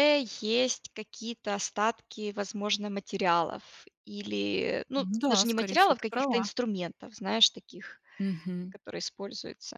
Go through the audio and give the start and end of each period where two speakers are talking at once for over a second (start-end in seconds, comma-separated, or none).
5.0-6.5